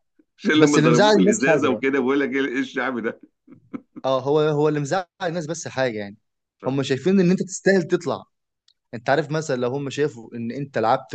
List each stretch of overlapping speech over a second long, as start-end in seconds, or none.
0.5-1.8